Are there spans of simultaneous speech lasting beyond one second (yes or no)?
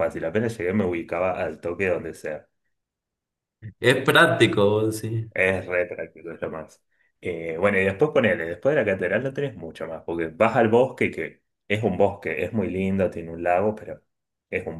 no